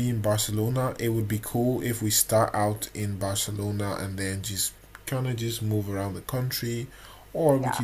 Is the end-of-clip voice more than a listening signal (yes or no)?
no